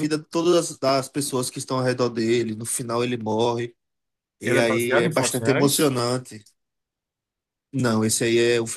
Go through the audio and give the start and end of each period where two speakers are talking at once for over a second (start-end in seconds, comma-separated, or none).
4.4-5.9